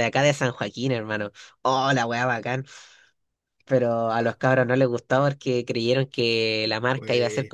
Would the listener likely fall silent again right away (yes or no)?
yes